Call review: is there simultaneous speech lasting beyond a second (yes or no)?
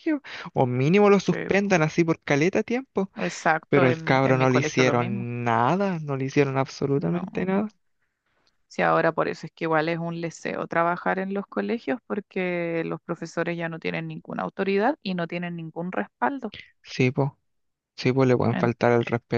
yes